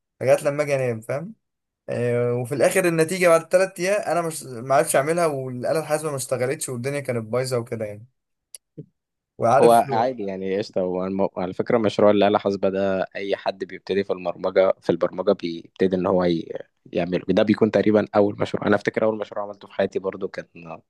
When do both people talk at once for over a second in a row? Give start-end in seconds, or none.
none